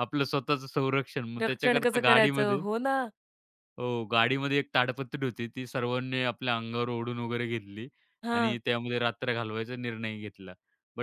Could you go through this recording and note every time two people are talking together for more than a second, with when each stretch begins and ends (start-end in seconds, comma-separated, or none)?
1.4-2.6